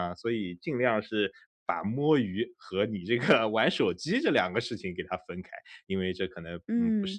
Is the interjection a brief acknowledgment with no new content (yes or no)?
yes